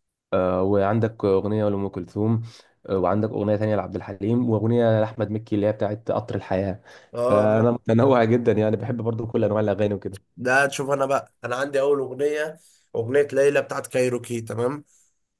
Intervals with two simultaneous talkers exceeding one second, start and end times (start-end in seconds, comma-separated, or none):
none